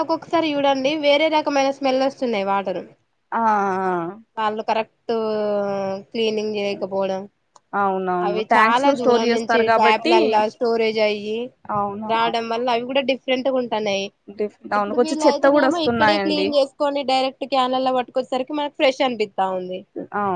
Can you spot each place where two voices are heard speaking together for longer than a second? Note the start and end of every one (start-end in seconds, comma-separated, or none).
8.3-10.1, 14.8-16.5